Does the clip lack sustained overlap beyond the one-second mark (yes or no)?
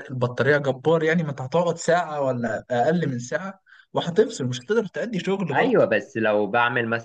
yes